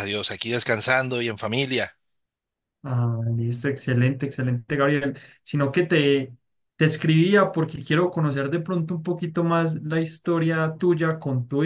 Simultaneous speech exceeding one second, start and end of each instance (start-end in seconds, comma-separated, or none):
none